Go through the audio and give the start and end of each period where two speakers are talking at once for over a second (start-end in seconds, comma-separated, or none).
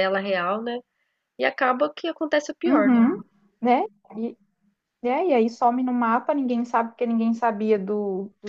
none